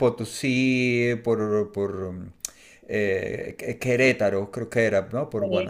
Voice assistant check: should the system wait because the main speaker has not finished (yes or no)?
no